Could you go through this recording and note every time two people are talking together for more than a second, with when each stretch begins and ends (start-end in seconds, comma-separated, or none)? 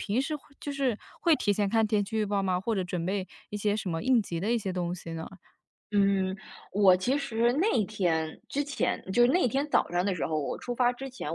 none